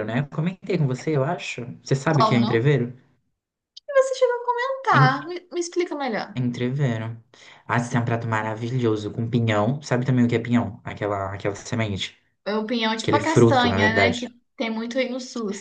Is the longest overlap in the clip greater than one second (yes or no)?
yes